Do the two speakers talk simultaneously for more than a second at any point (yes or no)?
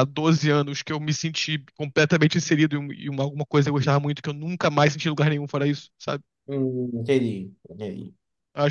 no